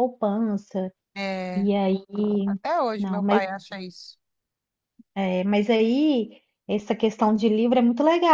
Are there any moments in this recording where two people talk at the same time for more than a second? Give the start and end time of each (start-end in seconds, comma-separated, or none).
none